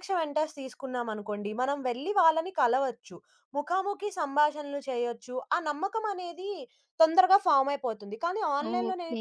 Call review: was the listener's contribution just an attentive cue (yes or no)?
no